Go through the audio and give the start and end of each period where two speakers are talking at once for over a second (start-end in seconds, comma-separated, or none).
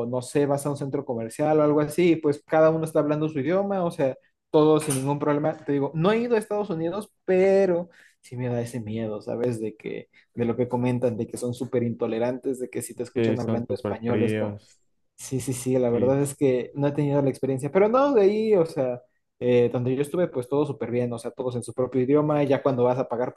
13.1-14.6